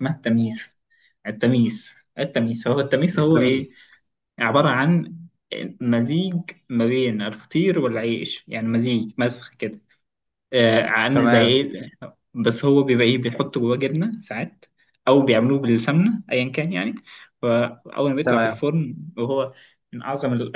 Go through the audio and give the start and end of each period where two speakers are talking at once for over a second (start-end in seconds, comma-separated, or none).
none